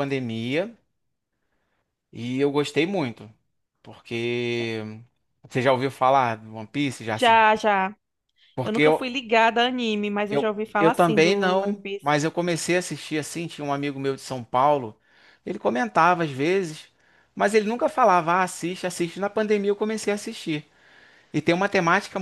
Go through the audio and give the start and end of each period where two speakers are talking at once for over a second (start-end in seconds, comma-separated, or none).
10.3-12.1